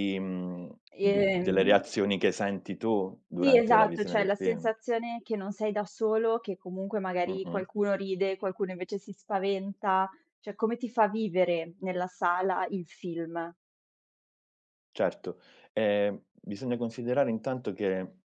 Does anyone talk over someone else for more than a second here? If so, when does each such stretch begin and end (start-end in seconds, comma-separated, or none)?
3.4-4.7